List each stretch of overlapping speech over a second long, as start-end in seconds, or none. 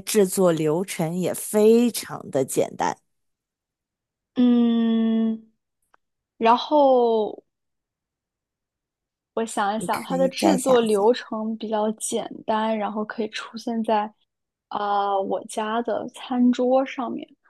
9.8-11.1